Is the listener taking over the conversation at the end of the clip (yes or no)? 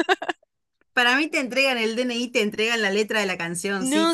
yes